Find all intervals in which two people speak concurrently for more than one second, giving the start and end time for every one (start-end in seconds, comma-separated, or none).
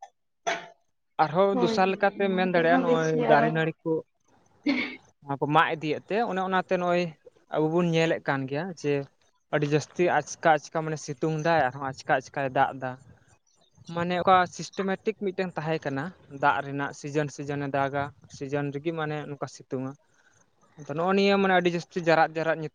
1.5-3.5